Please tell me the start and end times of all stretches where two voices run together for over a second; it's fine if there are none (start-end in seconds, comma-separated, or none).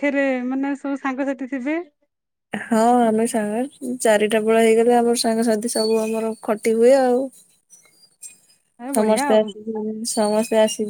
none